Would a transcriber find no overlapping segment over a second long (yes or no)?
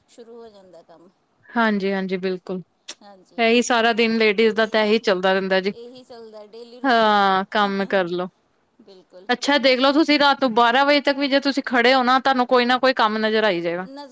yes